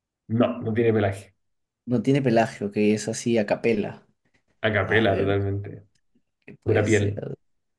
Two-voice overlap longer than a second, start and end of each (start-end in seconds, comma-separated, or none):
none